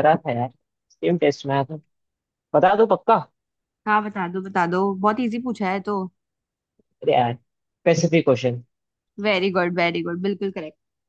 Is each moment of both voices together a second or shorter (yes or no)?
yes